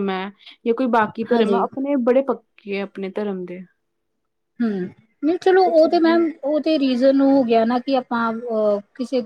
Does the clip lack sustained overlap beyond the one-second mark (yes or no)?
yes